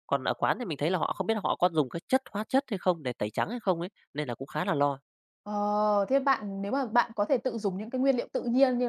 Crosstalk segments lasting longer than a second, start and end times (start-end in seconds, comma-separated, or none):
none